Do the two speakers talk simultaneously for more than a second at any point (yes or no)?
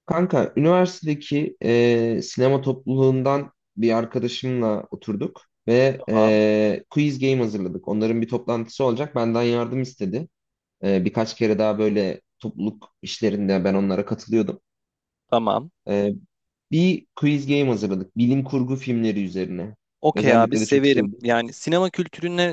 yes